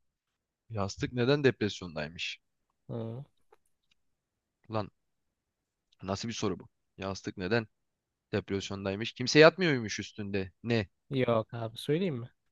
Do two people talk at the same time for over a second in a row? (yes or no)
no